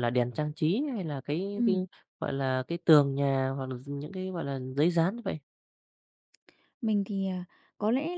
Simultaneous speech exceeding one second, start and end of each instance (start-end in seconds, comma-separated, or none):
none